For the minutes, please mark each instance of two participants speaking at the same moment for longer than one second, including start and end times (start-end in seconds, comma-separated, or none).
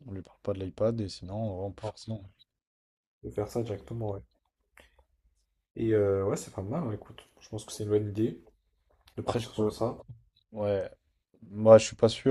none